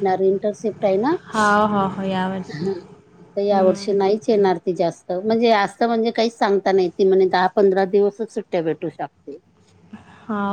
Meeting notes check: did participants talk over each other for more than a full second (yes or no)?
no